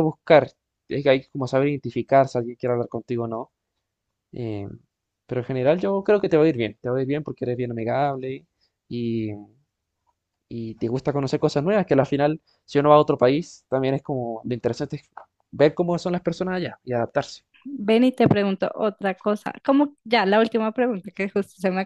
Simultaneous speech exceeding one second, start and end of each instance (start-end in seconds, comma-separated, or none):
none